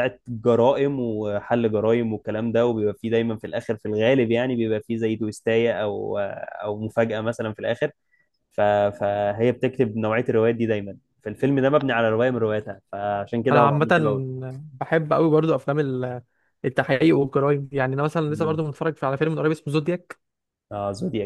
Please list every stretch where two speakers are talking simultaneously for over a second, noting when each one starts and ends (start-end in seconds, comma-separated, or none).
none